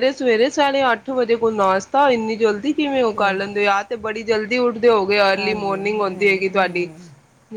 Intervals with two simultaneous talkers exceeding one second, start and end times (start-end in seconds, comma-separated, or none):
5.3-6.9